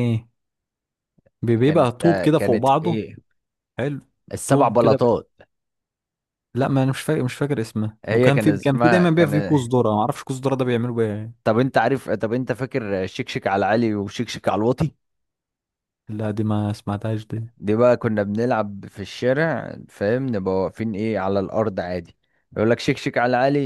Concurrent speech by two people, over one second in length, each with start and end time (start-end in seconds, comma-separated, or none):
1.6-3.0, 8.1-9.3